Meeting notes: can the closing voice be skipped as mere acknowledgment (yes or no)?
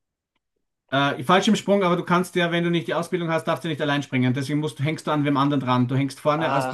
no